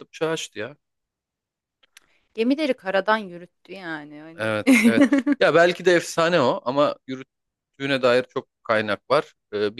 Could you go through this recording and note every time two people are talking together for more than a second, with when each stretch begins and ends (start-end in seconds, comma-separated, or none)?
none